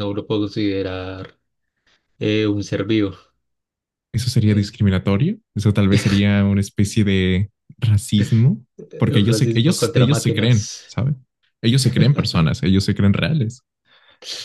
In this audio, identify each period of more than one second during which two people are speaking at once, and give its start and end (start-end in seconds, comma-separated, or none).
9.2-11.0